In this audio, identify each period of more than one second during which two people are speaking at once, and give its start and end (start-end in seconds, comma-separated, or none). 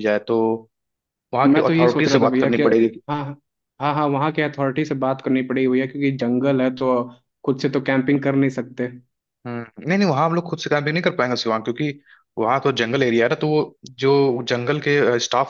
1.4-3.0